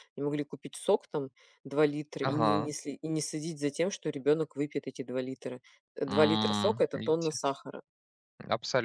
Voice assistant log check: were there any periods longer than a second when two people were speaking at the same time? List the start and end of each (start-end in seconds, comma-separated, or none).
6.1-7.4